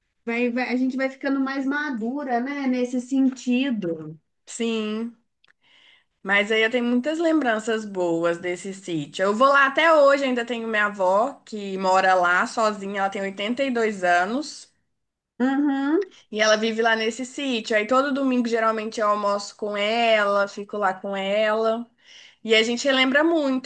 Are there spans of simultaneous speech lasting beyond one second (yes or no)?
no